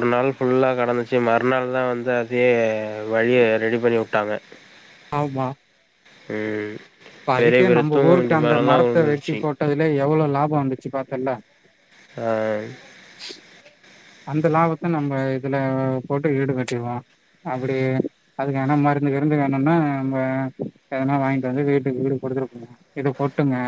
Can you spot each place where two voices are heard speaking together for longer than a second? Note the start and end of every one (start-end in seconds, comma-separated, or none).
7.4-9.4